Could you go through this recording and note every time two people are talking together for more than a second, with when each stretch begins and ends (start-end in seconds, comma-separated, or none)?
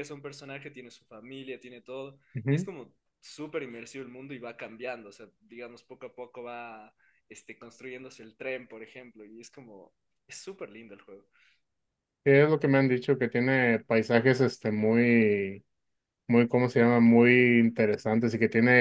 none